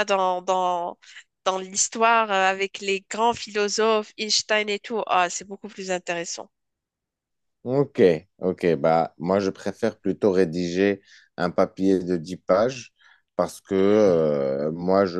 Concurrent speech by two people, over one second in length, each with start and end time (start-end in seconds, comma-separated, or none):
none